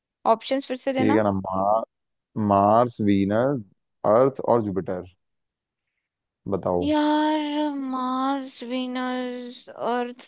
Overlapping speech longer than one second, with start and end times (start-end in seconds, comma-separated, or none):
none